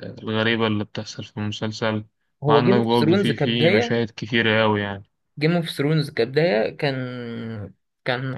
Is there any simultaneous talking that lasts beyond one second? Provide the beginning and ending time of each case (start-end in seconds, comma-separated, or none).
2.5-4.0